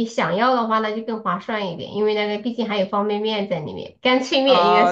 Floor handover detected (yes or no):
yes